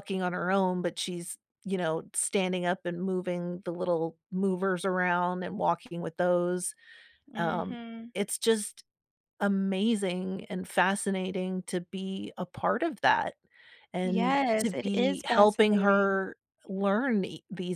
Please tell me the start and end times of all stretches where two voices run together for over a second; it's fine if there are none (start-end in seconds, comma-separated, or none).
14.0-16.2